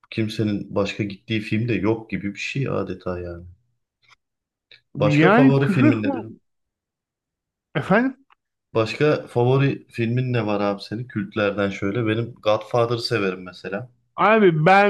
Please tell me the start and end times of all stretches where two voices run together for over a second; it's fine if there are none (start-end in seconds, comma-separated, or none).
5.0-6.2